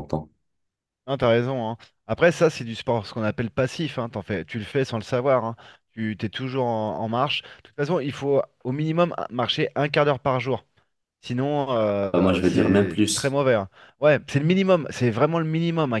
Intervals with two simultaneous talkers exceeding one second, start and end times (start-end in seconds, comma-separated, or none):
12.1-13.4